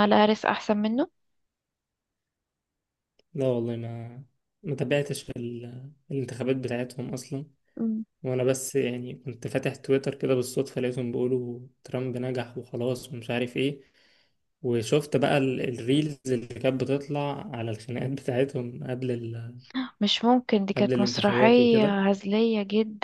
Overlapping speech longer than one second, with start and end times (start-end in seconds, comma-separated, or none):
20.8-22.0